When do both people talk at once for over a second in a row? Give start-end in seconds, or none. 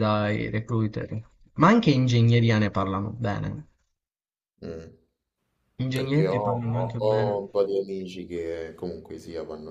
5.9-7.5